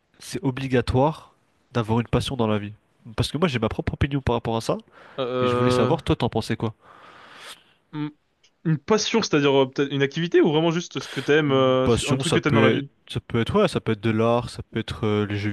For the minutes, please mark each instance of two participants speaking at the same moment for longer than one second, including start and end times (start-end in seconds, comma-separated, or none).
11.5-12.9